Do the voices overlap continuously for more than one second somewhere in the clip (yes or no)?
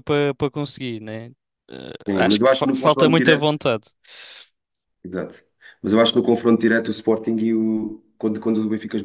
yes